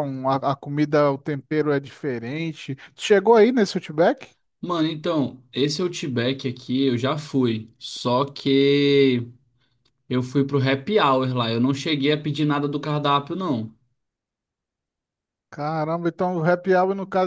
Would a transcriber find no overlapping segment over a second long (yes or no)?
yes